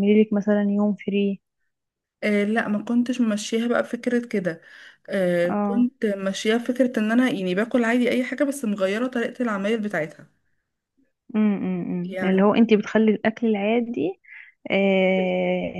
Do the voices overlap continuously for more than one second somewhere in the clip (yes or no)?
no